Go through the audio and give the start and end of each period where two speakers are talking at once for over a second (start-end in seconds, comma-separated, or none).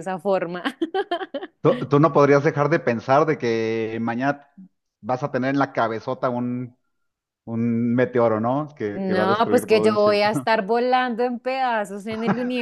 8.9-10.2